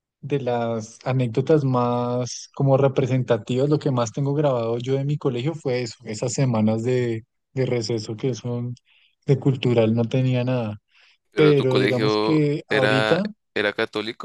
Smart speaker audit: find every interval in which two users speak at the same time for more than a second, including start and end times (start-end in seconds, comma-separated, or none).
11.3-13.3